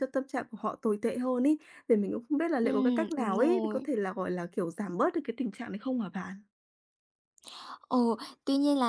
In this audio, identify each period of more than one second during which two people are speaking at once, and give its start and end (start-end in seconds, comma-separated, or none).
2.6-3.9